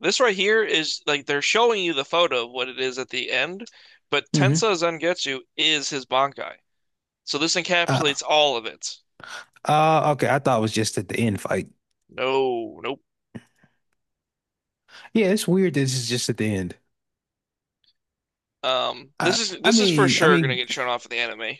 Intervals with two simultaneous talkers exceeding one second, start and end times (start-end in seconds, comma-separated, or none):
19.2-20.6